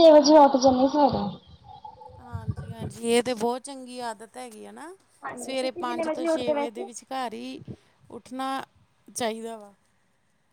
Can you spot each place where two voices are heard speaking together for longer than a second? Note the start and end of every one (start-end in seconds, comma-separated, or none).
5.4-6.9